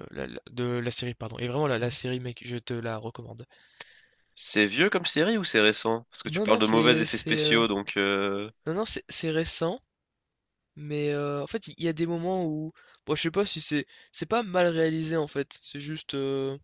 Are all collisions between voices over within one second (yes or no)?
no